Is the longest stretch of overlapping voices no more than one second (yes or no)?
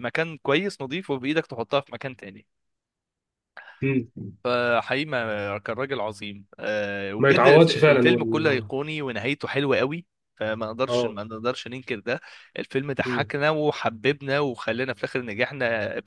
no